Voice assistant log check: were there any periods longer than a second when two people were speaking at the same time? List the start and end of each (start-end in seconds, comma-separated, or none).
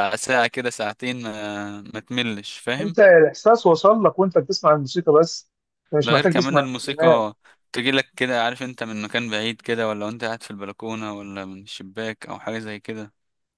6.0-7.2